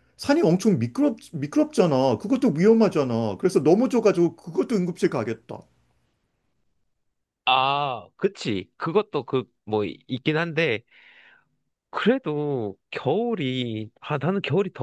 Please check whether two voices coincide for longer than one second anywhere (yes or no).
no